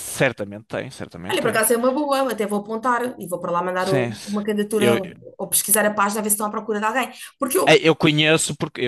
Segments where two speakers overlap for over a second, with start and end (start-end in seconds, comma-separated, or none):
3.8-5.0